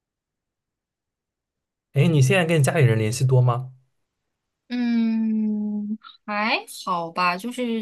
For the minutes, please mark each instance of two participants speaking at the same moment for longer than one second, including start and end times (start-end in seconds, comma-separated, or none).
none